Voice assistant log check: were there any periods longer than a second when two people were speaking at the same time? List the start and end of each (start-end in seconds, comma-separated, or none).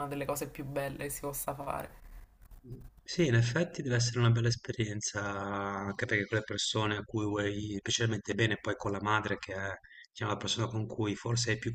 none